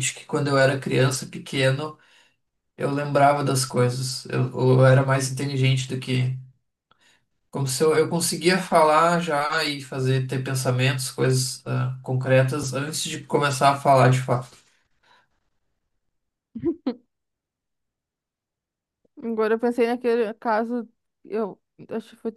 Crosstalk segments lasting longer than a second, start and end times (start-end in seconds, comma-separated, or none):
none